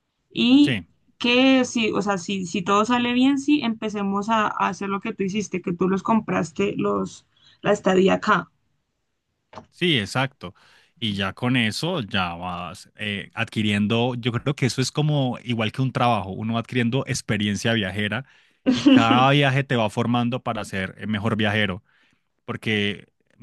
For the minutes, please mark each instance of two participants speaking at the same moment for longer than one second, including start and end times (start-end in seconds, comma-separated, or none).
none